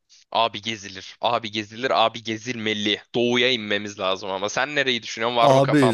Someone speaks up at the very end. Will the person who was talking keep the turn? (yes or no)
no